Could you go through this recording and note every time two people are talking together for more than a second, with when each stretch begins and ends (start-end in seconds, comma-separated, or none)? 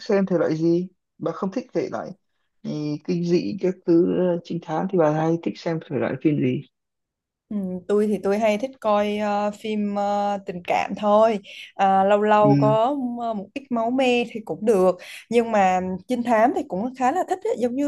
none